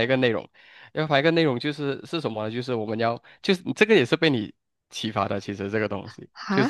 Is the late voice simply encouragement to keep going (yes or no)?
yes